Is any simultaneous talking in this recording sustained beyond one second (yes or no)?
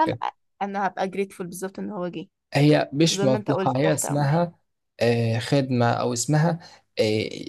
yes